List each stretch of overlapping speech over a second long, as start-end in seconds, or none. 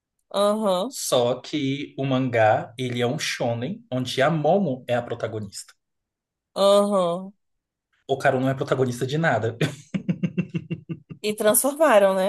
none